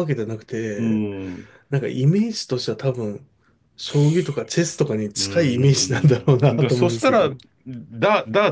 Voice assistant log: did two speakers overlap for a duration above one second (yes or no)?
yes